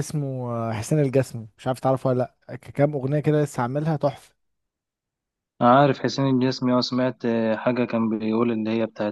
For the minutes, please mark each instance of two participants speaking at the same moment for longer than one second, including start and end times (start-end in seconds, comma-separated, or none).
none